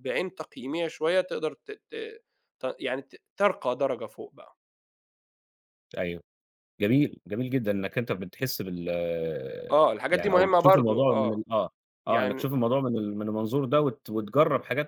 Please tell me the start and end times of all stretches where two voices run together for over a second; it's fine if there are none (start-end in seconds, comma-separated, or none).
10.1-11.4